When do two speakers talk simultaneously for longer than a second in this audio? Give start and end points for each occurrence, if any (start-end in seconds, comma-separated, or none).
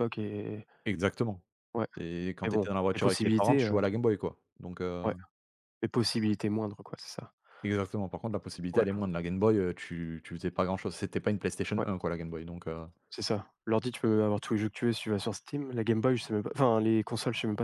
2.4-3.8